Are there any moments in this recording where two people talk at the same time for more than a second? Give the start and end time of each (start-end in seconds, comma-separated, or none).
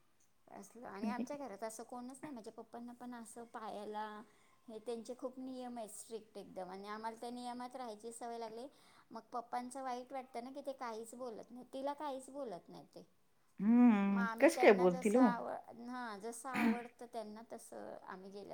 13.6-15.3